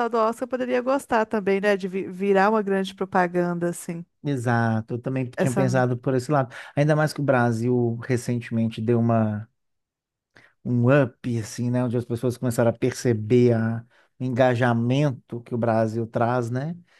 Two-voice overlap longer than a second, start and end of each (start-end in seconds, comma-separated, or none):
none